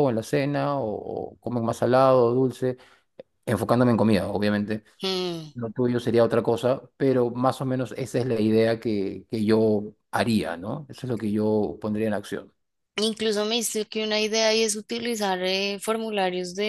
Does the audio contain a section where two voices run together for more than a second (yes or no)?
no